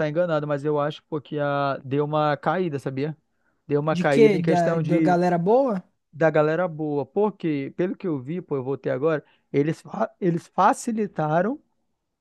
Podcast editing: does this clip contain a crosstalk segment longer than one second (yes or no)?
yes